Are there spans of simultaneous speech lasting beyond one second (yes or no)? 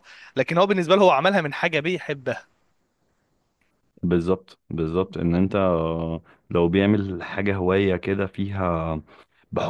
no